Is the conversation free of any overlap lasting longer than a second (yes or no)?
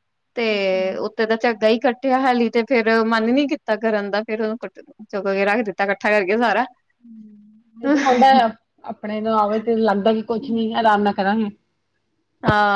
yes